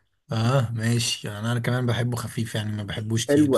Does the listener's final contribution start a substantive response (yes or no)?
yes